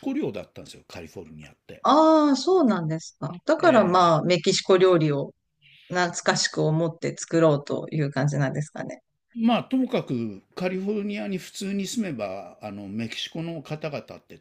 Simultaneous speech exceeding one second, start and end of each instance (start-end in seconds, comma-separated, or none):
none